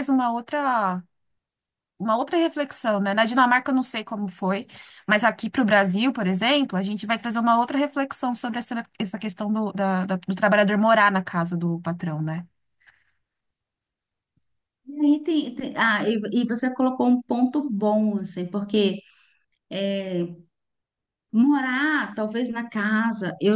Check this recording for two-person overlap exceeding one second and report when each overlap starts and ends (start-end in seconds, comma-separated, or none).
none